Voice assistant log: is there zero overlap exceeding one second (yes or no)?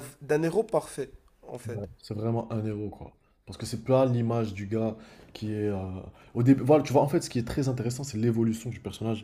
yes